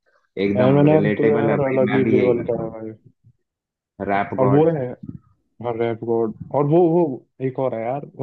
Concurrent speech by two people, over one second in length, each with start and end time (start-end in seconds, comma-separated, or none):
0.6-2.7